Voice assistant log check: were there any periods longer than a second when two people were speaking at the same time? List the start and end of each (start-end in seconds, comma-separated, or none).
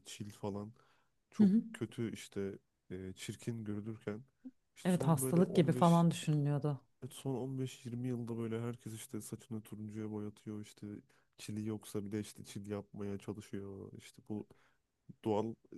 4.8-6.0